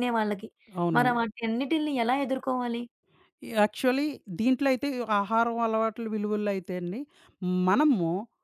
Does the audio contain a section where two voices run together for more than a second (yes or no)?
no